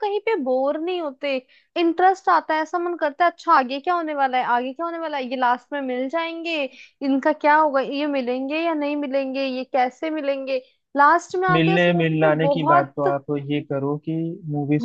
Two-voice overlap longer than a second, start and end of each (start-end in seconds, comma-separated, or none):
11.5-13.2